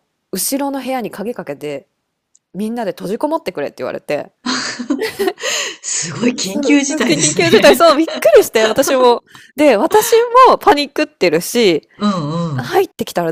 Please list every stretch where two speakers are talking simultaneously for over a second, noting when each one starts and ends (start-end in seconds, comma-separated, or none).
6.4-7.8